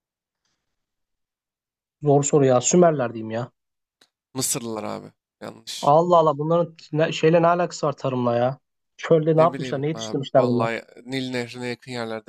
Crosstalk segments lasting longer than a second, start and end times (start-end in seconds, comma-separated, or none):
9.4-10.7